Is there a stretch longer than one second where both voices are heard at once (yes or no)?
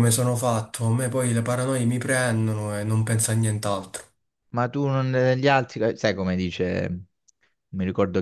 no